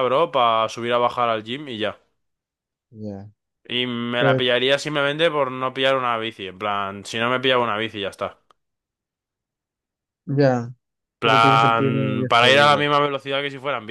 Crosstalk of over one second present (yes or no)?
yes